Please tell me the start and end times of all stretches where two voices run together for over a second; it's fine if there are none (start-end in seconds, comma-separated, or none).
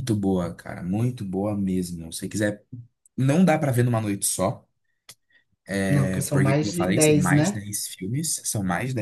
5.9-7.6